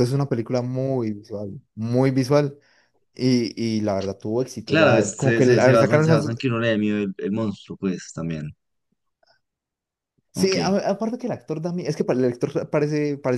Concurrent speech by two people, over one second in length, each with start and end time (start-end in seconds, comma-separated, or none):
4.6-6.4